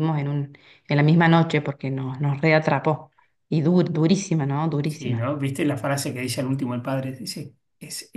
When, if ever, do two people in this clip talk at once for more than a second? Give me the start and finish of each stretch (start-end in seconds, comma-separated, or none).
none